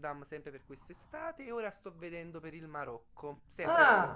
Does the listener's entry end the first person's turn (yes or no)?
no